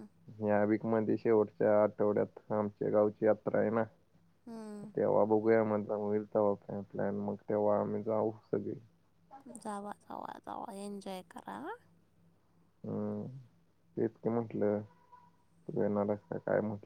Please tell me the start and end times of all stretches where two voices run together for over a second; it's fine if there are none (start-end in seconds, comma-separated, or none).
none